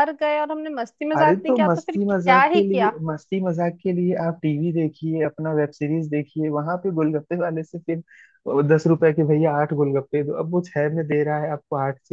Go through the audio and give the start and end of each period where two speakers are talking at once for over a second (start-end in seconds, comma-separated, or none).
1.2-2.9